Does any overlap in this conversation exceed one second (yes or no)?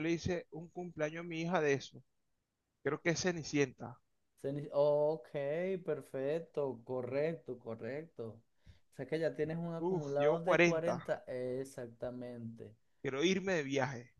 yes